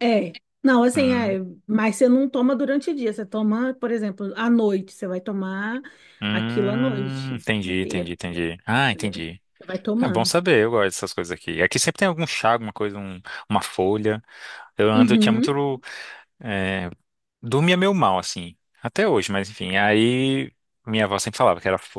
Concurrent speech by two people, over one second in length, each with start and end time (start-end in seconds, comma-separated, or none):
6.3-8.2